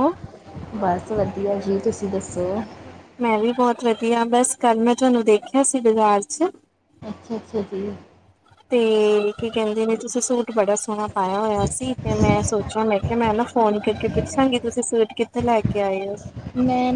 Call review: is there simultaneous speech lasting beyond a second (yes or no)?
no